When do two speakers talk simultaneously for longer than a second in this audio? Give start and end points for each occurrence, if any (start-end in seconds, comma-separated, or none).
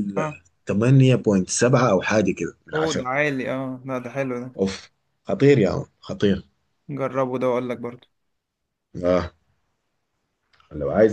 none